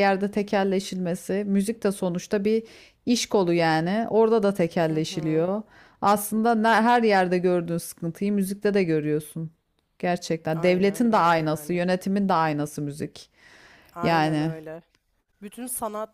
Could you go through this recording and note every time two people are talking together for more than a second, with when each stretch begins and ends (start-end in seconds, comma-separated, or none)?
10.5-11.8